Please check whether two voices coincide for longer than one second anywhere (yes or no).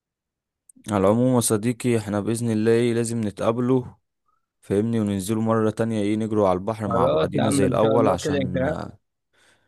yes